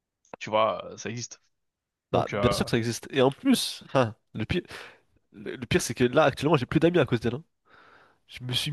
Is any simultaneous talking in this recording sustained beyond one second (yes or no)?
no